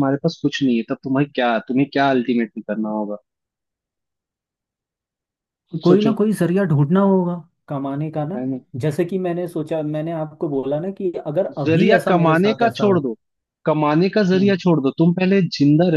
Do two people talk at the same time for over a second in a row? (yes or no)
yes